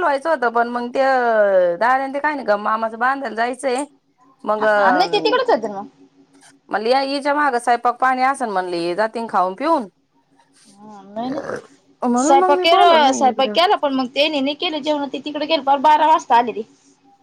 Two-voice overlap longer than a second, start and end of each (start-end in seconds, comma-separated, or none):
12.2-13.6